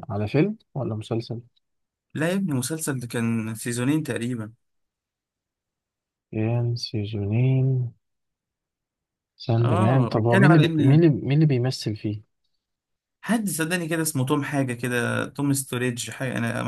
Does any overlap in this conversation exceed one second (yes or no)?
yes